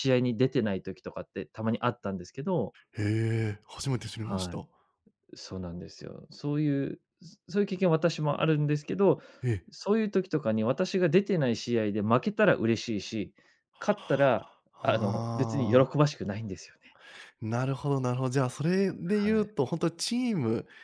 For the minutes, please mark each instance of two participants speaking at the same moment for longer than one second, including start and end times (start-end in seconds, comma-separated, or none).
14.7-16.0